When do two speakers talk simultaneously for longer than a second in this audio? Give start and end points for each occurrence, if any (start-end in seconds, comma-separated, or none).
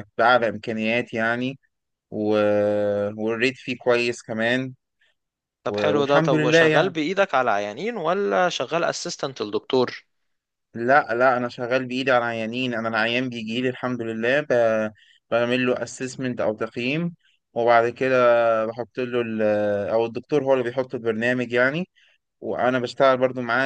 5.7-6.9